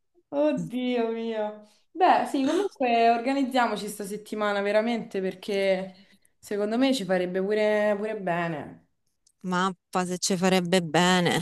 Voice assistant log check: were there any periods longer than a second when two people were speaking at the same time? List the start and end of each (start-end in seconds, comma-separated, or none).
none